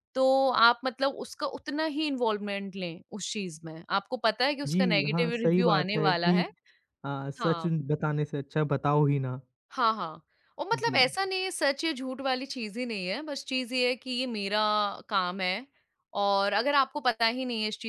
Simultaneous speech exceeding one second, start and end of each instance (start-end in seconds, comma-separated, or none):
4.7-6.4